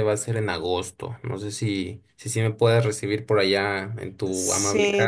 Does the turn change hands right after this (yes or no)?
yes